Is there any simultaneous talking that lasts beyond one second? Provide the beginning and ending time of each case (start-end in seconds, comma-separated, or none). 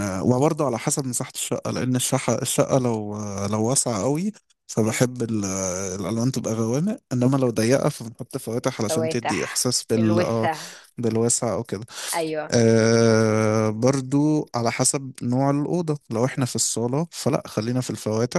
8.9-10.5